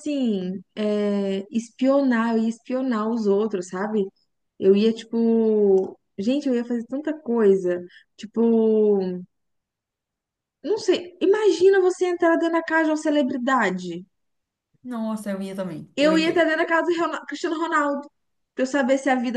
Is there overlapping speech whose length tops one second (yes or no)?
no